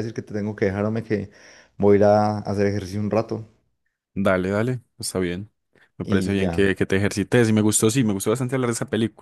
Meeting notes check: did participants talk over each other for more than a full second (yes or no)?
no